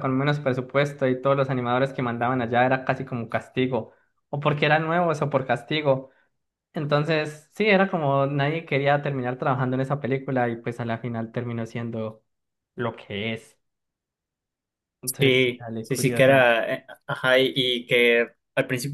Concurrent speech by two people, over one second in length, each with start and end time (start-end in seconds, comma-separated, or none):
15.2-16.5